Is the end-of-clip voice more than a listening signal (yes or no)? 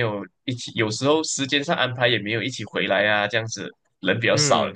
yes